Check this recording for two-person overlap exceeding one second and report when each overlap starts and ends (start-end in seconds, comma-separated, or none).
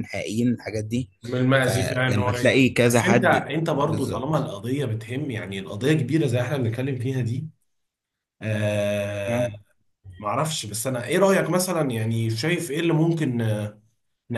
1.6-4.5